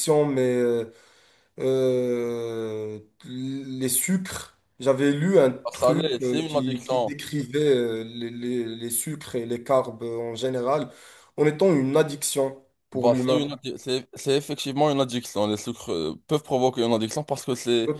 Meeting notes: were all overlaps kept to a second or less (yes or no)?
no